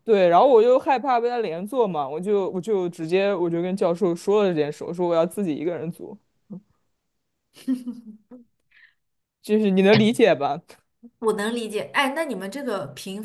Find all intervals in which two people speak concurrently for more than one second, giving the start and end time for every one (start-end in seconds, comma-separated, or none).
none